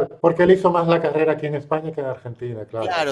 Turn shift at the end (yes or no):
yes